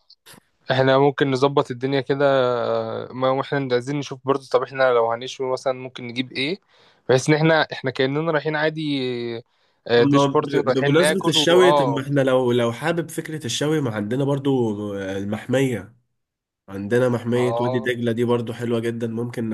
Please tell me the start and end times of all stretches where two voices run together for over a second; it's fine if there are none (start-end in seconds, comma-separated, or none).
9.9-12.0